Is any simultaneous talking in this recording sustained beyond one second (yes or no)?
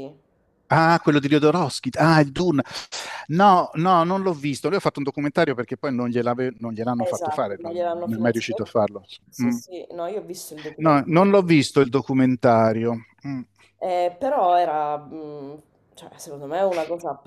yes